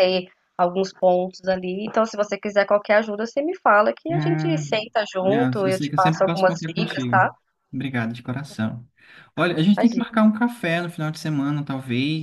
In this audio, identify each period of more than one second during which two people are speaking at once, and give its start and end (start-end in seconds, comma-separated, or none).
4.1-7.3